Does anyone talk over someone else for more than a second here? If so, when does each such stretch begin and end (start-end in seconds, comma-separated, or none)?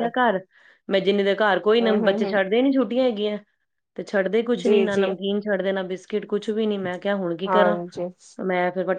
none